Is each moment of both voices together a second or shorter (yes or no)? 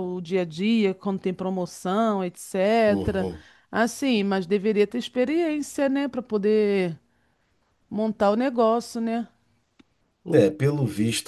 yes